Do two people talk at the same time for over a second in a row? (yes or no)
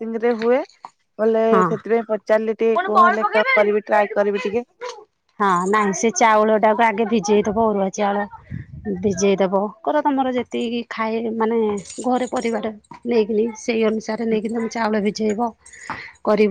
yes